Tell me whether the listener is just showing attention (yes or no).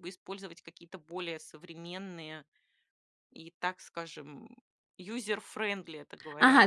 no